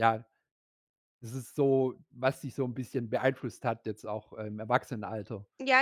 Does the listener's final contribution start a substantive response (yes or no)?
yes